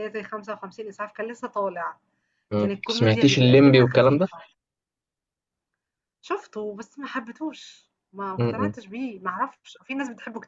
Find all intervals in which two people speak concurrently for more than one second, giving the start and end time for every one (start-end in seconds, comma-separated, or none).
2.6-4.3